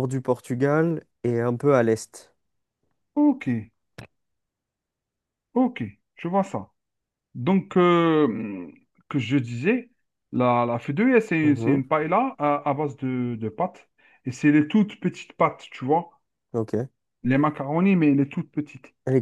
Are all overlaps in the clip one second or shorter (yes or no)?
yes